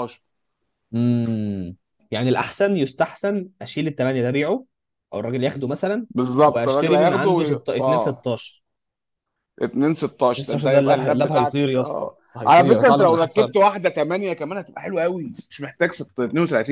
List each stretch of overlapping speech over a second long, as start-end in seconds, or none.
6.5-8.3, 10.3-13.5